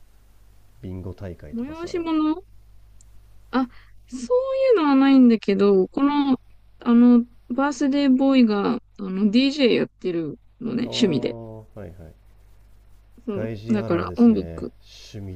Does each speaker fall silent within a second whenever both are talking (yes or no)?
no